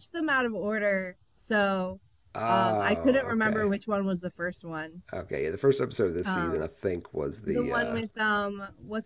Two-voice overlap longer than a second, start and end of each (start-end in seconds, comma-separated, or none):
2.5-3.7